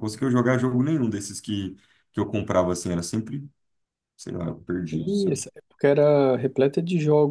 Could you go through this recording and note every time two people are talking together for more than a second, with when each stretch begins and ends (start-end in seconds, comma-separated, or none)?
none